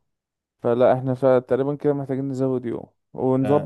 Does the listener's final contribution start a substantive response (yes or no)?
no